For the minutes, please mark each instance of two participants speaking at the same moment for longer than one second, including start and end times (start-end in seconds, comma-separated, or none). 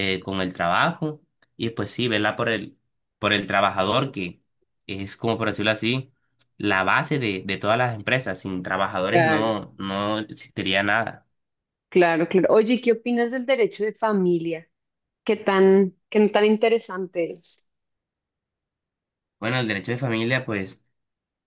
none